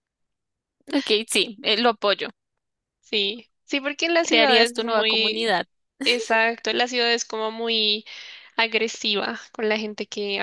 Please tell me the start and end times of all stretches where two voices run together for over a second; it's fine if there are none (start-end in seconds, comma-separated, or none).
4.2-5.5